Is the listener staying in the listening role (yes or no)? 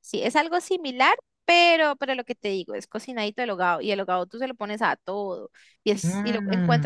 yes